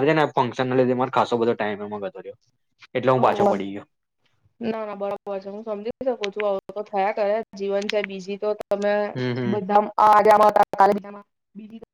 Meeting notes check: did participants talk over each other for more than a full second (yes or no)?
no